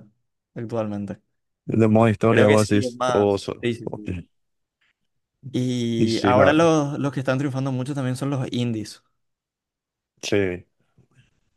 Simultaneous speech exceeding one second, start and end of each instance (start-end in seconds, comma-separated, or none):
2.3-4.0